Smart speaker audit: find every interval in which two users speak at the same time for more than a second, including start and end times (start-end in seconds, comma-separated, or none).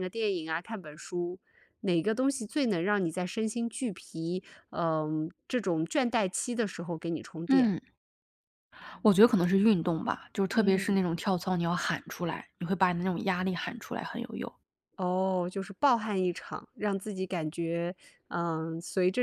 none